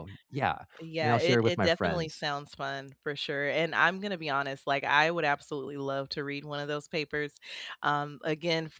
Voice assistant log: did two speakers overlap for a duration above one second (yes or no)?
yes